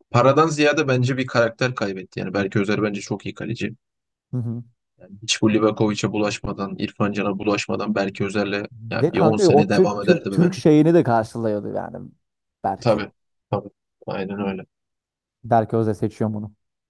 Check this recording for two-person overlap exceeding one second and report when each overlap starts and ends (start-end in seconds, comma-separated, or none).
9.0-10.6